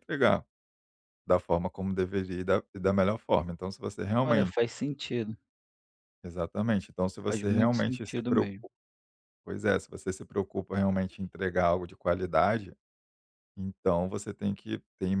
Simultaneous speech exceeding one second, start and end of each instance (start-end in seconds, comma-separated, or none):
7.3-8.7